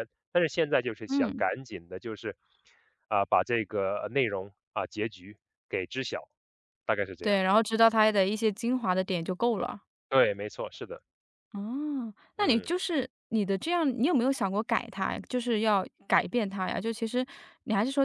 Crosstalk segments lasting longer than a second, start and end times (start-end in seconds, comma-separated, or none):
none